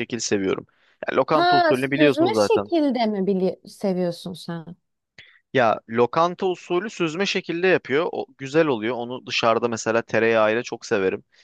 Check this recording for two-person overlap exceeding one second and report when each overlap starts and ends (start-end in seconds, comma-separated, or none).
1.3-2.7